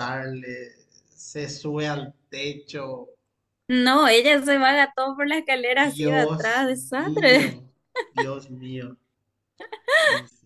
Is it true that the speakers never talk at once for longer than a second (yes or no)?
no